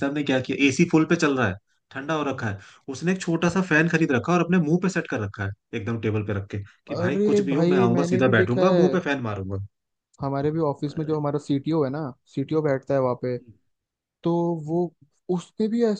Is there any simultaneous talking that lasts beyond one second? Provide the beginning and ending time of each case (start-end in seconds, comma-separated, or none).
6.9-9.0